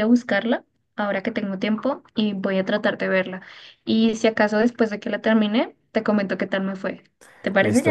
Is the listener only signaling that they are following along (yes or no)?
no